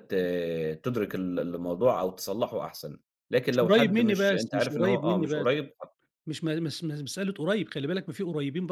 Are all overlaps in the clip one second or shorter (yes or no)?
no